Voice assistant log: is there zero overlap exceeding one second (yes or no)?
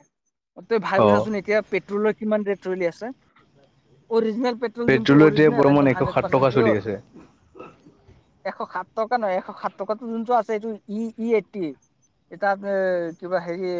no